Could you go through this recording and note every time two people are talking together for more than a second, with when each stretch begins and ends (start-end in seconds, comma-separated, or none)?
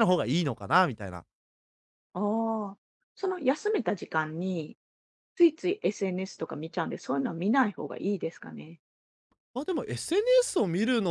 none